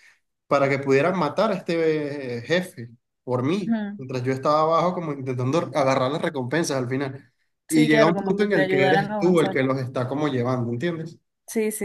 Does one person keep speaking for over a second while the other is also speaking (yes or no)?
yes